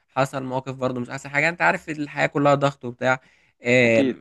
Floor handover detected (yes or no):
no